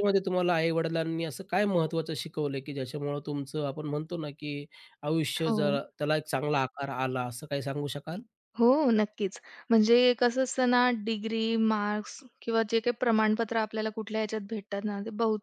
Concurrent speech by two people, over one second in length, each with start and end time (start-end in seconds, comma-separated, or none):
none